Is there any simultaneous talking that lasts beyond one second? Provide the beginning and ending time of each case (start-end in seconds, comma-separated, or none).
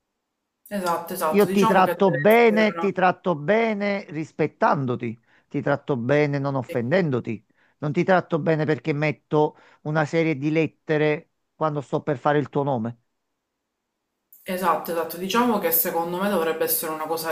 1.3-2.9